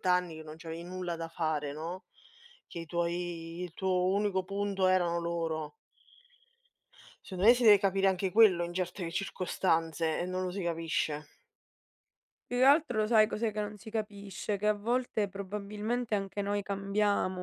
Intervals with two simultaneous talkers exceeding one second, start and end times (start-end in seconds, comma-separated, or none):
none